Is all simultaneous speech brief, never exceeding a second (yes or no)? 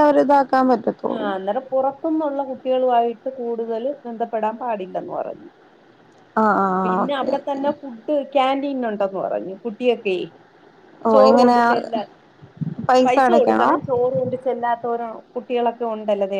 yes